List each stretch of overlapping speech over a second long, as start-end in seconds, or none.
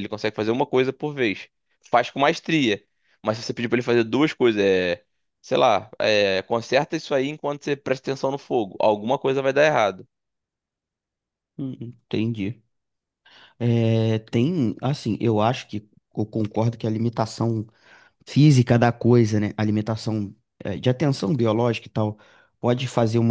none